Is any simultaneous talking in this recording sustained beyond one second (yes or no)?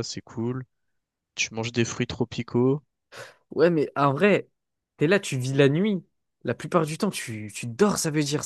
no